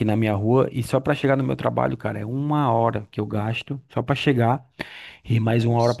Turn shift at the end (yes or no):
no